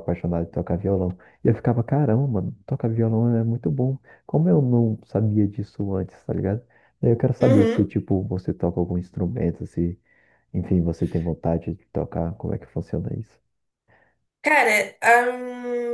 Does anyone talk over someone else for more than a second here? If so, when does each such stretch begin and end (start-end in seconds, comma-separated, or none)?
none